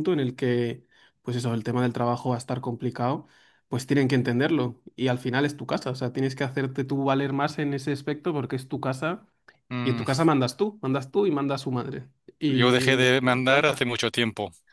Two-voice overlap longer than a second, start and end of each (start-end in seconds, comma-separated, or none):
12.5-13.8